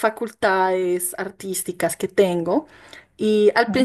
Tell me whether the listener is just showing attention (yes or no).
yes